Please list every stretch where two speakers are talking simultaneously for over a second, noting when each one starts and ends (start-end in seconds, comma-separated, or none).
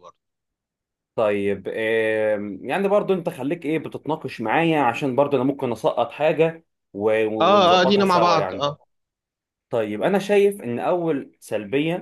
7.4-8.7